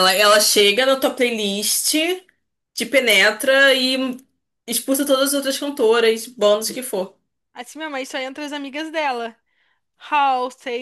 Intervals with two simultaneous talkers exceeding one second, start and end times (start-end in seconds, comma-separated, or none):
none